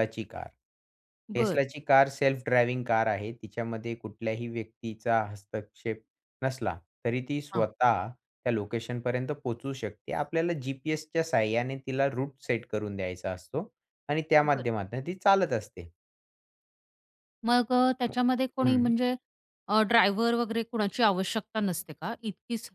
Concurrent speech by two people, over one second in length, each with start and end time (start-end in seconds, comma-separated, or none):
none